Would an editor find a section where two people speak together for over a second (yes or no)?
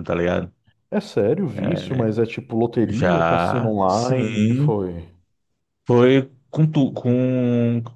yes